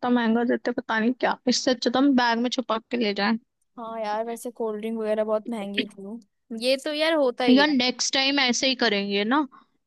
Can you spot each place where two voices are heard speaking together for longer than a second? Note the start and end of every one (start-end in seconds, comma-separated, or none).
none